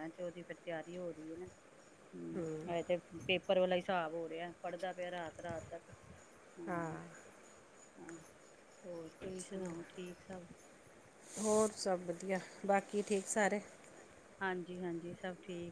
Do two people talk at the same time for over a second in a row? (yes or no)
no